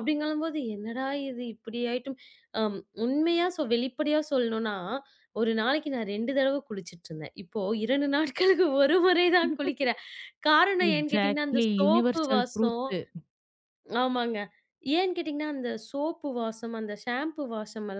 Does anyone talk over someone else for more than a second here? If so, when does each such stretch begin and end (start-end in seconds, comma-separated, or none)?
10.9-12.8